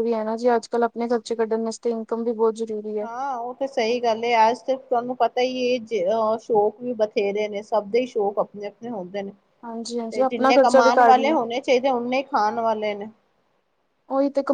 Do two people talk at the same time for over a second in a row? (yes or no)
yes